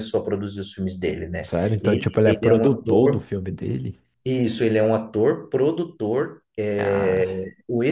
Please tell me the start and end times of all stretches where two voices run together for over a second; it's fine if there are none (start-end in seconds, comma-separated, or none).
1.4-3.2